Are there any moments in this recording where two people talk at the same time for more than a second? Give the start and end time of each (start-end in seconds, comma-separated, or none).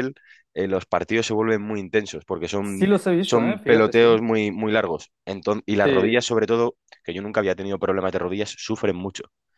2.6-4.1